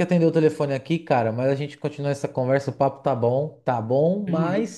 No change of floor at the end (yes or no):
yes